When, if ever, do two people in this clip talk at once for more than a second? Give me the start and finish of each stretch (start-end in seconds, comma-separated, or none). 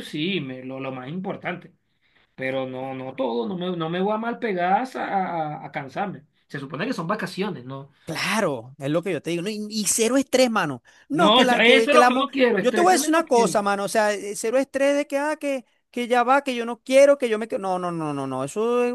11.1-13.6